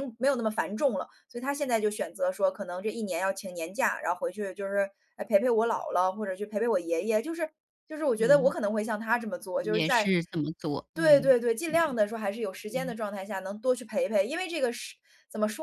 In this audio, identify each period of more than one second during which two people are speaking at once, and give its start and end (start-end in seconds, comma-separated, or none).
none